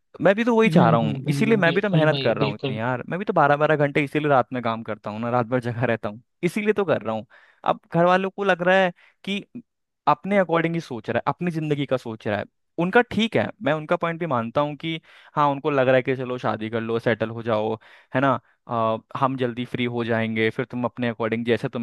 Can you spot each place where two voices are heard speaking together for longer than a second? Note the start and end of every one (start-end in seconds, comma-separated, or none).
0.7-2.8